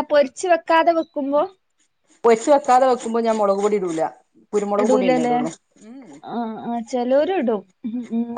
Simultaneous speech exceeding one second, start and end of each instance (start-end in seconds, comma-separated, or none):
none